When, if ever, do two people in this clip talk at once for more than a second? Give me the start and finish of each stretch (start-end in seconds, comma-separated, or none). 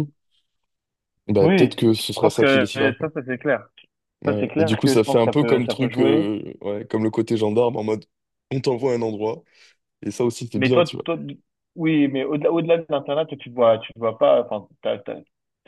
1.4-3.1, 4.3-6.2